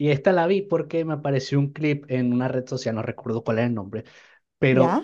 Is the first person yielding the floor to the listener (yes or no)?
no